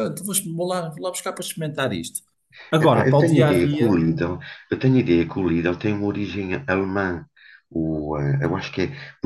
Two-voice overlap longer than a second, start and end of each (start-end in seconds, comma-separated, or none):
2.8-4.0